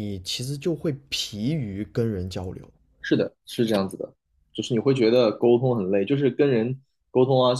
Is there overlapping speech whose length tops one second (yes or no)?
no